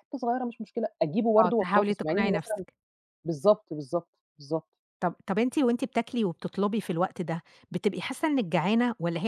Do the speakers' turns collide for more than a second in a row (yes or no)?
yes